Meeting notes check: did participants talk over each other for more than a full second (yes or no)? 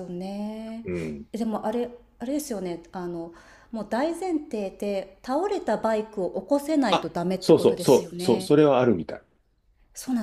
yes